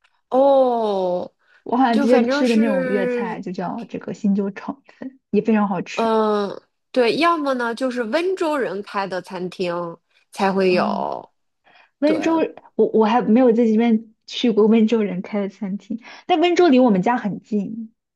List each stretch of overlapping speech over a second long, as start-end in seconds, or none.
1.9-3.4